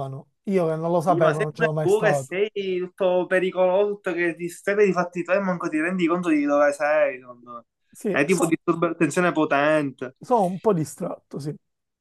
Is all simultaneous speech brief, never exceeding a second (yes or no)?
no